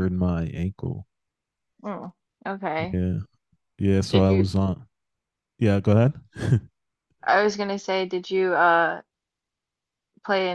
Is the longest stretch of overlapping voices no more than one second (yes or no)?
yes